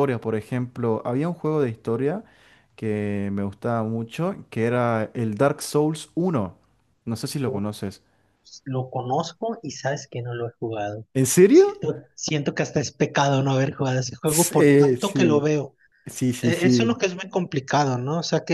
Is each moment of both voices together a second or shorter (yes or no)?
no